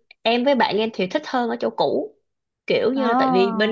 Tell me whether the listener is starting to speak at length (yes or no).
no